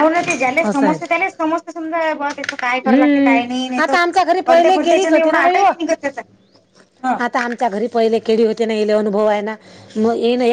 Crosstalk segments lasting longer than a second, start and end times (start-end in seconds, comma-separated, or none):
4.5-5.7